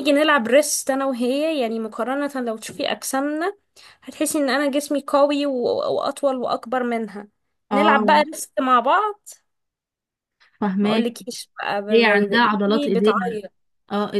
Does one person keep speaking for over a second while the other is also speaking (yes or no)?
yes